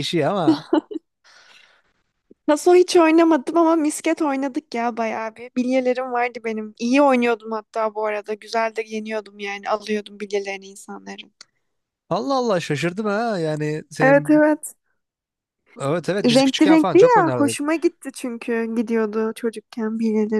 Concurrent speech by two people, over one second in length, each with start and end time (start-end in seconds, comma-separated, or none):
16.2-17.6